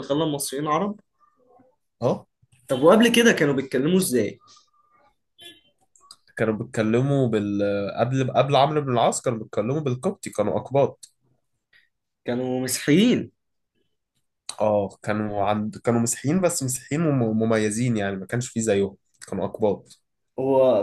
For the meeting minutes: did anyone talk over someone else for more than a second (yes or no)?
no